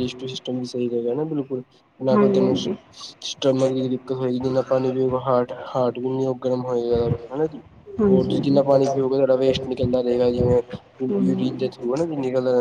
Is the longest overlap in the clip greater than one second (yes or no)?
yes